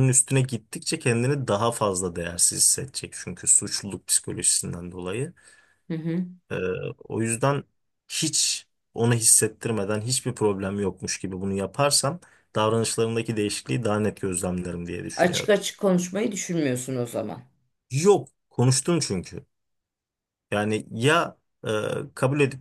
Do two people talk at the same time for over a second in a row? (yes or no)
no